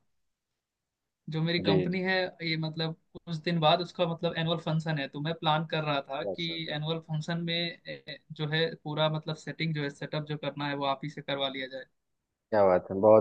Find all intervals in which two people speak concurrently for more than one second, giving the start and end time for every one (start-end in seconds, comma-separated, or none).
none